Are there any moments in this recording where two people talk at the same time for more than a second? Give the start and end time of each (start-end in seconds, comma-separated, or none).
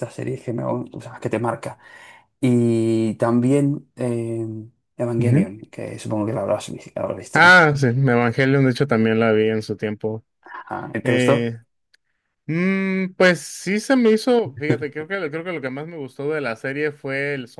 none